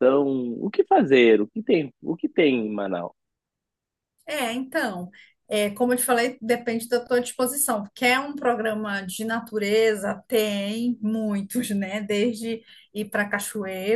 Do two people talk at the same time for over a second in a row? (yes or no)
no